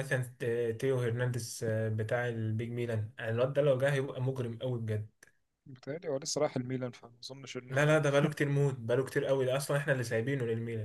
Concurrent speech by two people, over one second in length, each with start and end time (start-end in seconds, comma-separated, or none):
none